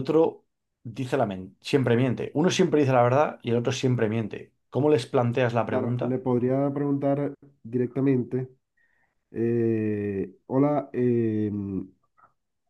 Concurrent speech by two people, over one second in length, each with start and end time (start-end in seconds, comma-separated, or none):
none